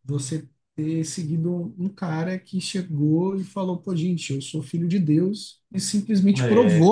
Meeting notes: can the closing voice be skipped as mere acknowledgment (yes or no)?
yes